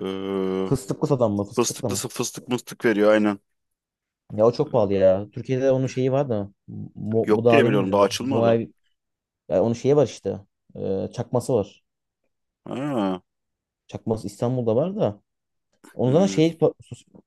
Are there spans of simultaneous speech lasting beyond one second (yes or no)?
yes